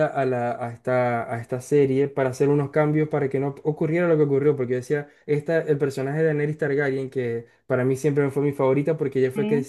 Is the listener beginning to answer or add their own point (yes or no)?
no